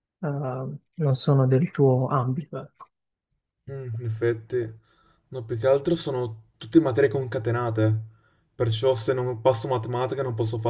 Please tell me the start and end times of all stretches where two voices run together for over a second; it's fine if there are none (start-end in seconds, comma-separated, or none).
none